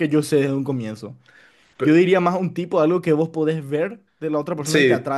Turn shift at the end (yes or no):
yes